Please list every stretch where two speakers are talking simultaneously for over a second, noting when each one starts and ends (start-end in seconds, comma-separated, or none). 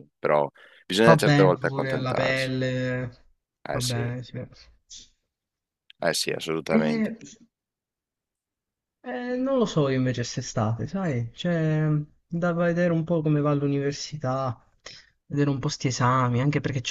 1.0-2.5